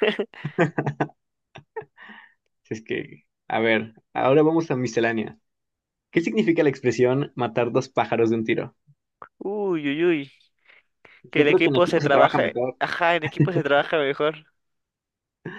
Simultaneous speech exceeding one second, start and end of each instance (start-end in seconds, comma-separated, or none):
11.3-12.8